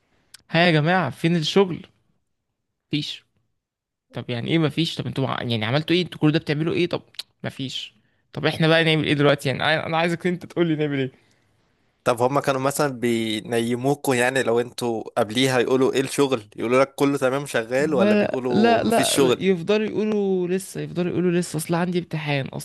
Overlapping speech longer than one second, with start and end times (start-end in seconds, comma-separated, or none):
17.8-19.4